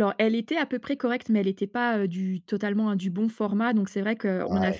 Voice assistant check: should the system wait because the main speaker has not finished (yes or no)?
yes